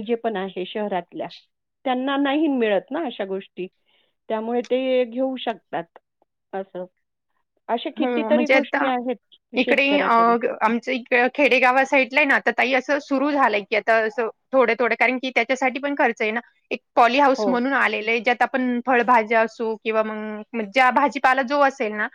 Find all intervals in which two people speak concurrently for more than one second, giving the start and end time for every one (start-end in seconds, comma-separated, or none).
none